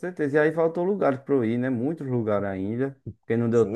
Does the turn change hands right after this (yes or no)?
yes